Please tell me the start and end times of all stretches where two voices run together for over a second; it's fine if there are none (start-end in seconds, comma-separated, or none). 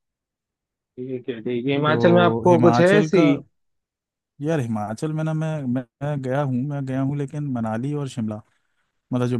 1.9-3.2